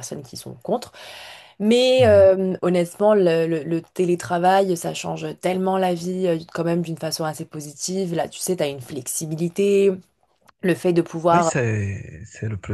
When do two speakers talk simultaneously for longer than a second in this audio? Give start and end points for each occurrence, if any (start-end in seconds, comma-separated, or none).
none